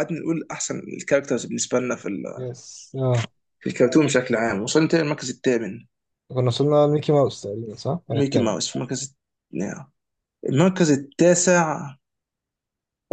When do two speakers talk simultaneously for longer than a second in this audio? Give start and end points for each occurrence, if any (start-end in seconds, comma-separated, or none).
none